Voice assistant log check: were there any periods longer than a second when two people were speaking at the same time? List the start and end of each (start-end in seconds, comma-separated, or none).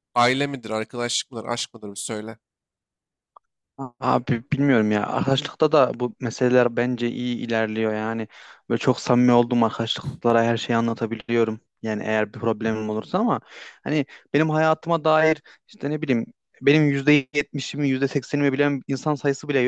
none